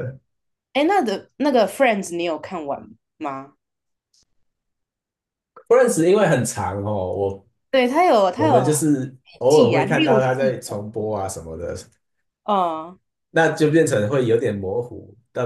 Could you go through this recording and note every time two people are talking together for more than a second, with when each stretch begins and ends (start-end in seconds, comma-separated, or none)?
9.2-10.9